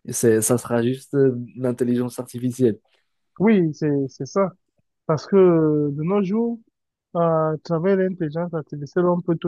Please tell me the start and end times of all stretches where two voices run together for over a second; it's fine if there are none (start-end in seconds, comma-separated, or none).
none